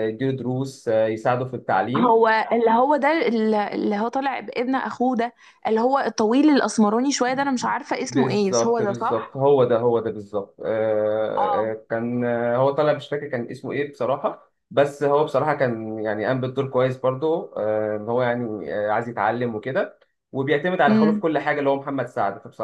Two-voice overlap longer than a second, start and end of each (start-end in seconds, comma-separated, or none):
8.1-9.4